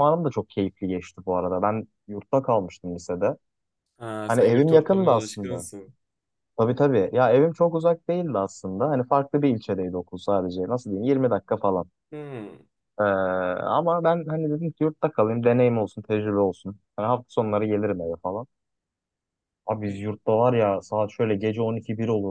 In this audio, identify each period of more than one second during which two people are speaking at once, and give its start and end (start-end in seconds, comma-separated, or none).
4.2-5.7